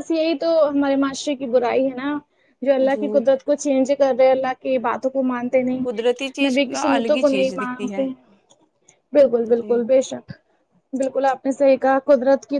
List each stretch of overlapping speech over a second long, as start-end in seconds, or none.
5.9-8.0